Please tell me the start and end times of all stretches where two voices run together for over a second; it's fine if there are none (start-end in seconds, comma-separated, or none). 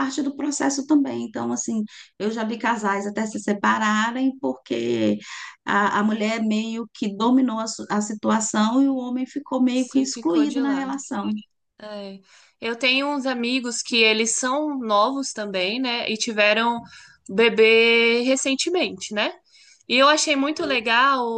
9.7-11.0